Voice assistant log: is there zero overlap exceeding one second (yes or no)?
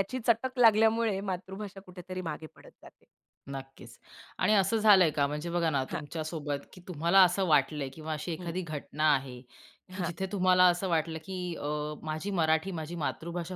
yes